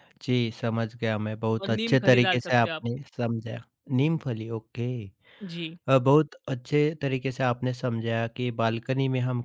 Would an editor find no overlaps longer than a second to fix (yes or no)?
no